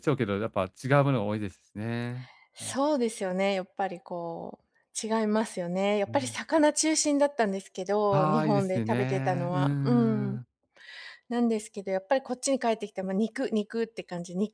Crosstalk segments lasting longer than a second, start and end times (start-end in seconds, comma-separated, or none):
8.1-10.4